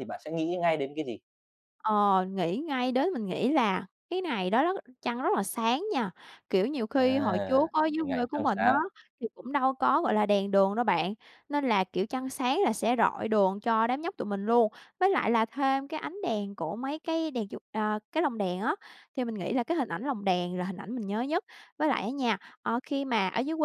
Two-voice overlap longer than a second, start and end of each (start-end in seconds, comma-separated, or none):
7.0-8.7